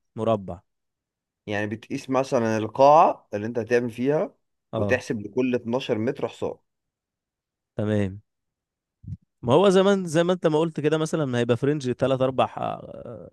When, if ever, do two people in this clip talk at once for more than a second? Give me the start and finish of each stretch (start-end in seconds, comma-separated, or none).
none